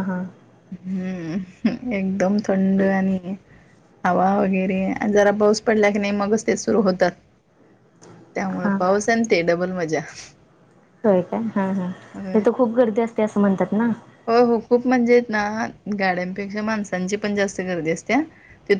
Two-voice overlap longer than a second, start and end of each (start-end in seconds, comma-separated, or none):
none